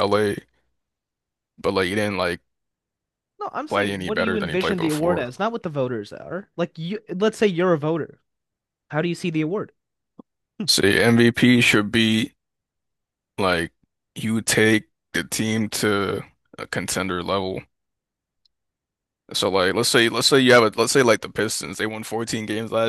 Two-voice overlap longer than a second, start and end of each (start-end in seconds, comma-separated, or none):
3.7-5.3